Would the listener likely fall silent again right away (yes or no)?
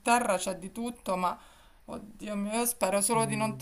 yes